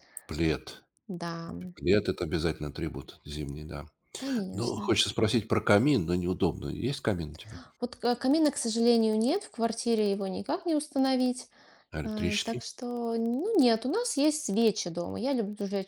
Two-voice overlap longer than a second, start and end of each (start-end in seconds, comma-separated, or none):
none